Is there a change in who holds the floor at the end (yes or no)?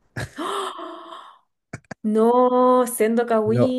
yes